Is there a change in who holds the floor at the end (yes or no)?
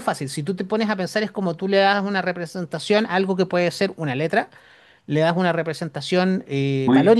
yes